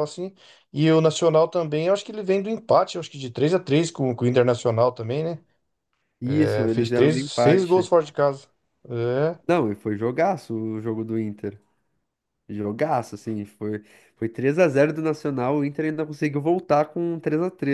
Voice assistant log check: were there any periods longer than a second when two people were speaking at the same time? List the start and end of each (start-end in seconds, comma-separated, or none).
6.2-7.9